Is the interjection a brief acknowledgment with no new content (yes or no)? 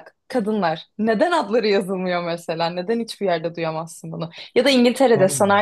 yes